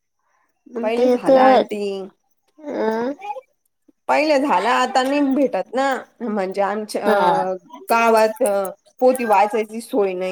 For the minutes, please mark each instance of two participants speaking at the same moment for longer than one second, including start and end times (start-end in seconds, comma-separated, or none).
none